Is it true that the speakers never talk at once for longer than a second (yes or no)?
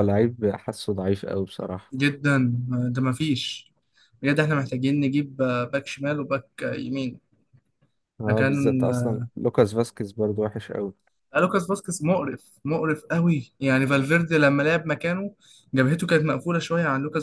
yes